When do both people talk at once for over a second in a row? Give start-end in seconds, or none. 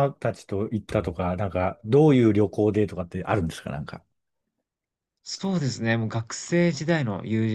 none